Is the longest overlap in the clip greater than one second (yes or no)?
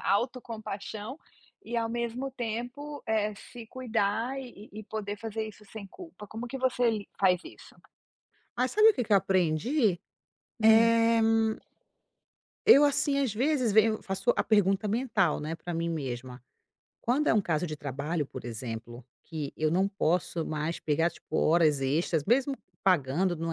no